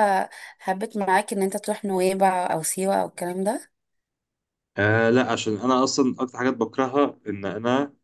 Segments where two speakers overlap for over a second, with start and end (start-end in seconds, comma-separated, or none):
none